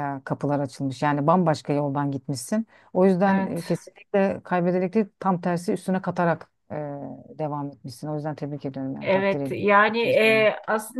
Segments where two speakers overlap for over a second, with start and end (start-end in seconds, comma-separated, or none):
9.0-10.5